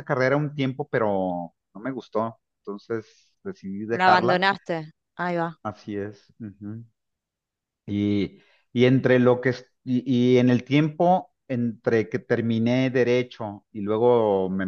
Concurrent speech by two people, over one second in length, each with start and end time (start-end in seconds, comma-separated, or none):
none